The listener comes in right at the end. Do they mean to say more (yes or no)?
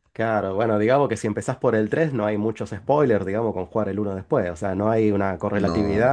no